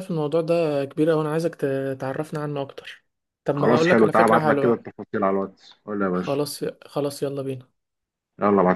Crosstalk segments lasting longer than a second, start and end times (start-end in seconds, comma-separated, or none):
3.6-4.8